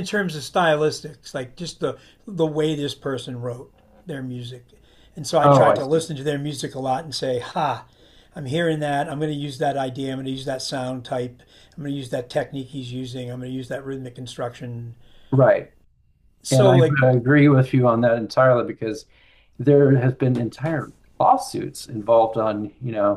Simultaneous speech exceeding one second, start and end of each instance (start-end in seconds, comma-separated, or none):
none